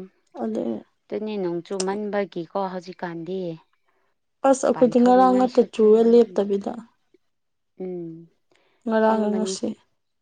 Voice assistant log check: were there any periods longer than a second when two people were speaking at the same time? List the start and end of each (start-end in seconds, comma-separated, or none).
4.7-6.7